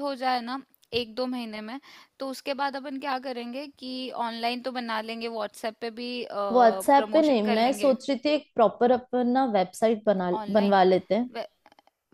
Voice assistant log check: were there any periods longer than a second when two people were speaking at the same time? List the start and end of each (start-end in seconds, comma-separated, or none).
6.5-7.9